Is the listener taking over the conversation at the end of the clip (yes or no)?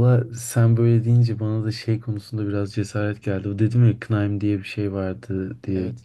no